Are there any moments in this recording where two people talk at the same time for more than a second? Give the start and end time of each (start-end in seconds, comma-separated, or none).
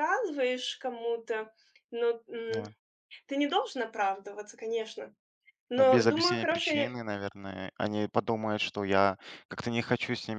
5.8-7.0